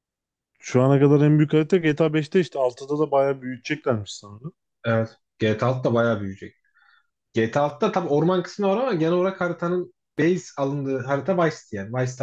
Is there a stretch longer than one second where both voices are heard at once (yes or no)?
no